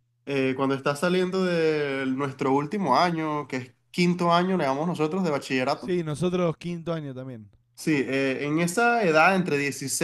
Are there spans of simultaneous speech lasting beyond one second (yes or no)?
no